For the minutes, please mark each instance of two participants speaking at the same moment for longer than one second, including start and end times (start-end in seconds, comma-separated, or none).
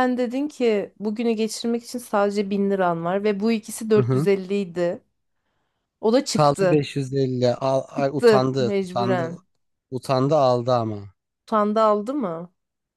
8.0-9.3